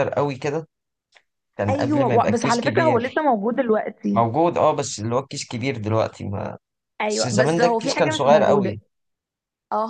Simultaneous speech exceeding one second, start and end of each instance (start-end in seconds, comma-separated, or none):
1.7-3.2, 7.0-8.8